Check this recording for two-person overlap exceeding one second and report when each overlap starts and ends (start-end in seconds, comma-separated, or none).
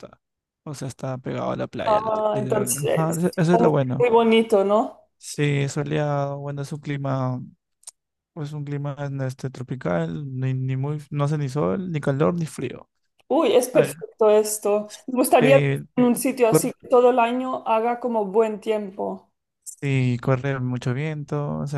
1.9-3.3